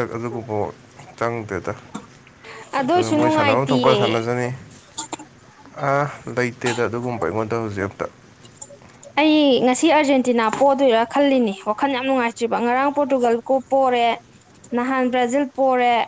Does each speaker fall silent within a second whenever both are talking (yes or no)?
no